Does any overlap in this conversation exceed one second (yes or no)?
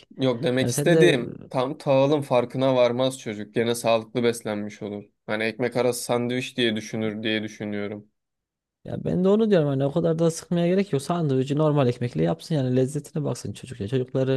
no